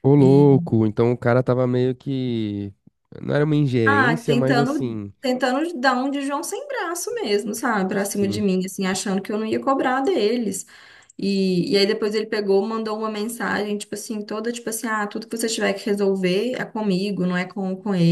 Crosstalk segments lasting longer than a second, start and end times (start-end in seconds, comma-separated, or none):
3.9-5.1